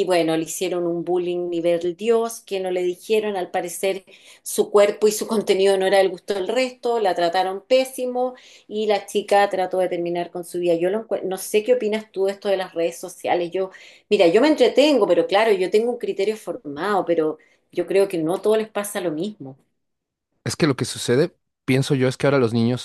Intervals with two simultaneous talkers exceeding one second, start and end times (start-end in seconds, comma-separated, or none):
none